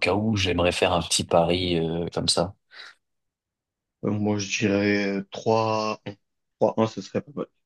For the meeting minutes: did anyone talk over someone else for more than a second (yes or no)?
no